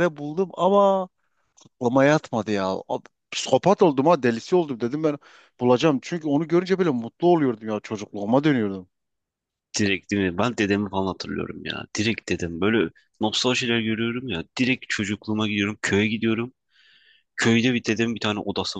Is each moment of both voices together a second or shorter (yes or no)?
yes